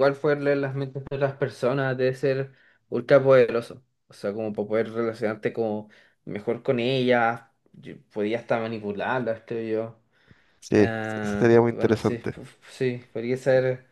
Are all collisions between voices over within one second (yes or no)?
no